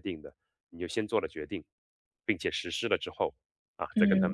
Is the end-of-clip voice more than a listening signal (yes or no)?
no